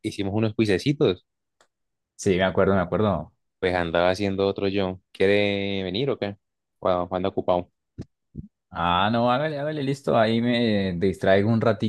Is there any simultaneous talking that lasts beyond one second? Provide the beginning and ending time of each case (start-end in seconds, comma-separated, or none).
none